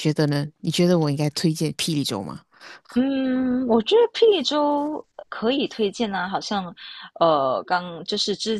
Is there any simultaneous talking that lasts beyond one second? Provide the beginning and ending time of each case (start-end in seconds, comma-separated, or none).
none